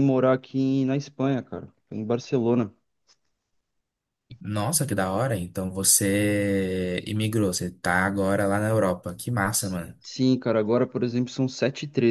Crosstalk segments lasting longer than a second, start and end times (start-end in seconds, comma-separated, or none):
none